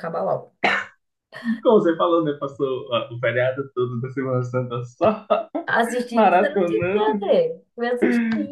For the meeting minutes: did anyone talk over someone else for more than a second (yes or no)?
yes